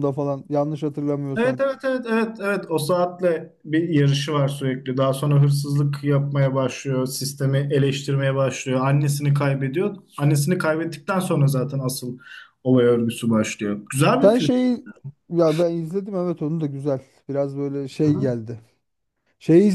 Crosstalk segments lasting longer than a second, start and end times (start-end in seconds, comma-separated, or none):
none